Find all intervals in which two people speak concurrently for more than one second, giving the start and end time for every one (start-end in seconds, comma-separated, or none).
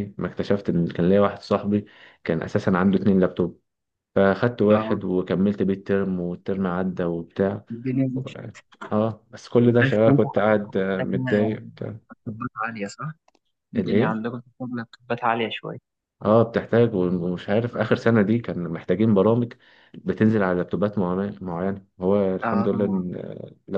9.6-11.6